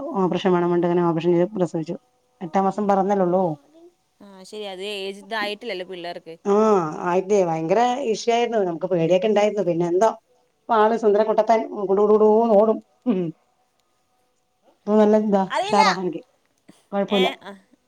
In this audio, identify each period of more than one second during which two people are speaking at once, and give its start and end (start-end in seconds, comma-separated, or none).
none